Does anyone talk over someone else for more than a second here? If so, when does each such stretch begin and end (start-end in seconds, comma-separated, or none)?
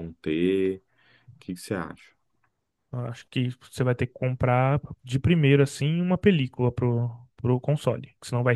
none